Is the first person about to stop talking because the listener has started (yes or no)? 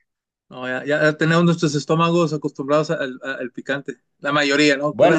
yes